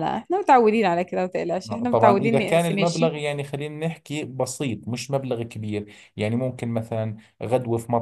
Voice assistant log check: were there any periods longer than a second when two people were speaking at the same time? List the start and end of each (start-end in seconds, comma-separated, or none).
1.7-3.2